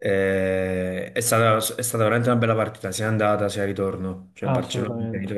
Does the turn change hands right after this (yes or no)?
no